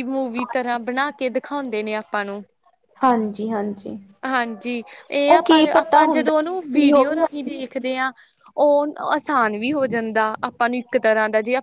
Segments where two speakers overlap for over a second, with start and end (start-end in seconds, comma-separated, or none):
5.3-7.0